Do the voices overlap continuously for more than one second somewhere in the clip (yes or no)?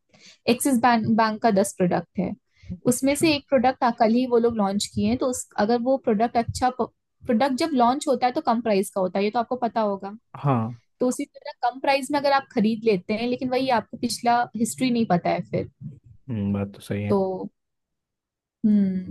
no